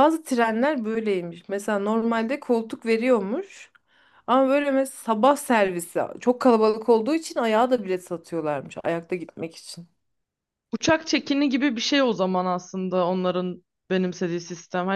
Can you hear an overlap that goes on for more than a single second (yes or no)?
no